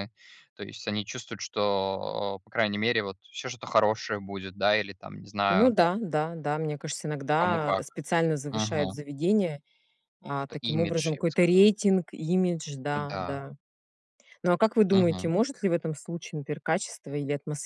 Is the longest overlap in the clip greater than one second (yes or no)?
yes